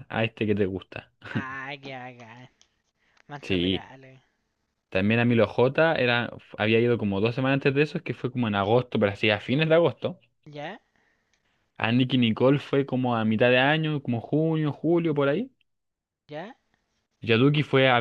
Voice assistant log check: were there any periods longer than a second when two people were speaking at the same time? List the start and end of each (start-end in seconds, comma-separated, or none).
none